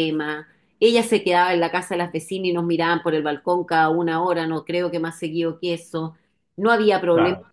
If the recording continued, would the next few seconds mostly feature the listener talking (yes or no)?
no